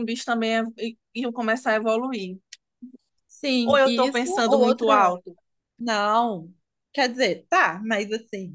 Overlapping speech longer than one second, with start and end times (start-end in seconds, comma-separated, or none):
3.6-5.1